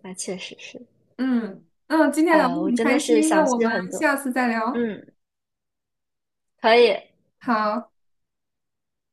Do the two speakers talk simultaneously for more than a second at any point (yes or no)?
yes